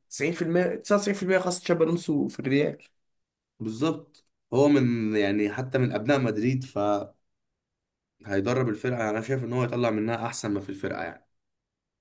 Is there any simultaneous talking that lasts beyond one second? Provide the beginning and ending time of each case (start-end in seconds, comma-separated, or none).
none